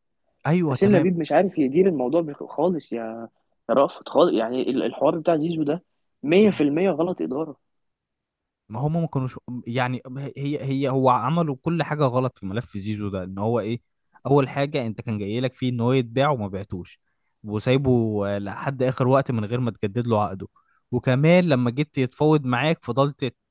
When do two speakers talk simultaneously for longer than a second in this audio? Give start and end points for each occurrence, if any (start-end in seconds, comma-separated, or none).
none